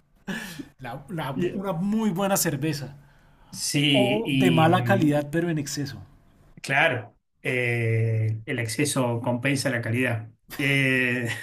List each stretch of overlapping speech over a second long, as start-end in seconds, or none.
3.9-5.2